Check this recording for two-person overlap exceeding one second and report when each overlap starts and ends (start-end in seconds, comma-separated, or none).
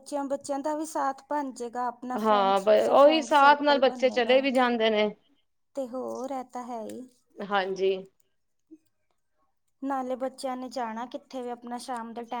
2.2-4.4